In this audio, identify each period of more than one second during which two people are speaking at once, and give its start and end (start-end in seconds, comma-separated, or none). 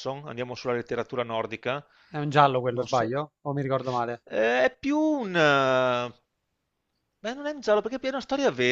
none